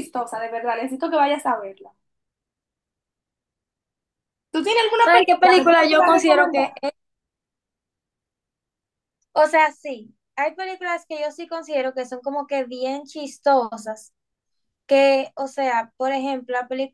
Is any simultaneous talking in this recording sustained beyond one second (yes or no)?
yes